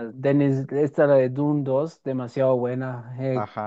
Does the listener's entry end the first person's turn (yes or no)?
no